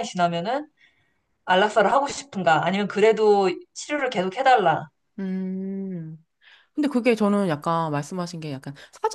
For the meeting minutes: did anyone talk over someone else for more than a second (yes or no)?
no